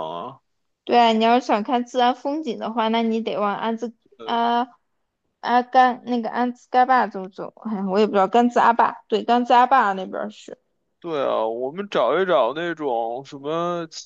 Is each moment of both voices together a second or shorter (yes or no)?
yes